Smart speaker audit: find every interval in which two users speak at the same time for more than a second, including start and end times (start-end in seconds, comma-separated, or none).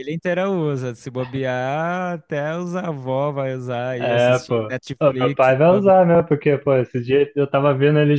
4.0-6.0